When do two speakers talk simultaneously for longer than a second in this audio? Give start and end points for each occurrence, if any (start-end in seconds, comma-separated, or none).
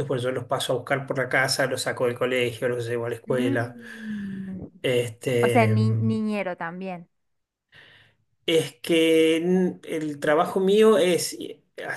none